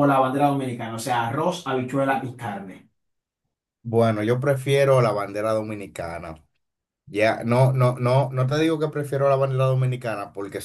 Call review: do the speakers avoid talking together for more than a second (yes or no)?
yes